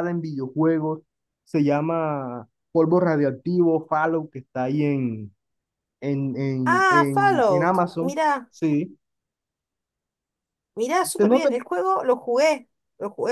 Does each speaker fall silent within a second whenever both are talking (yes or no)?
no